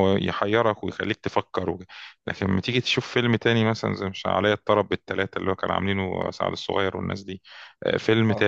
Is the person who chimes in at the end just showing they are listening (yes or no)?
yes